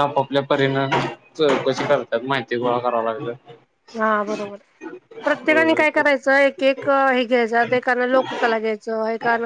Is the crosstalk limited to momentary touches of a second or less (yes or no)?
yes